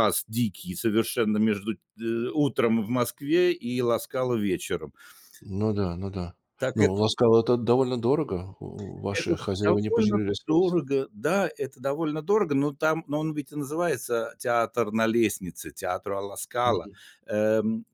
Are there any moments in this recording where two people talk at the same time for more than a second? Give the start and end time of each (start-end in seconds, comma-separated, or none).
9.1-10.8